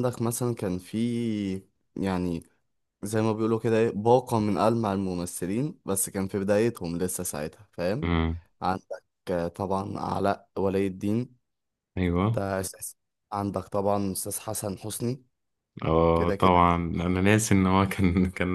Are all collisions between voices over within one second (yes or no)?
yes